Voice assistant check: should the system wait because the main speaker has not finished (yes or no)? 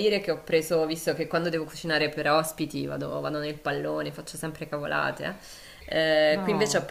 yes